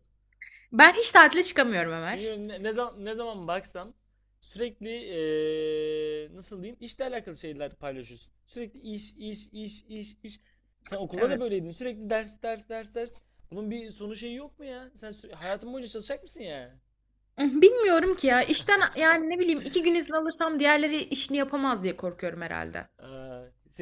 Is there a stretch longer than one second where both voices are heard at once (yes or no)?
no